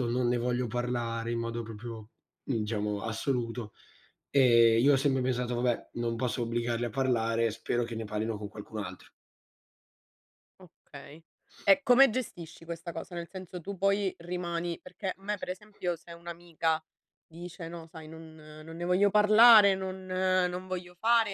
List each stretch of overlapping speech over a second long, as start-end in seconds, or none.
none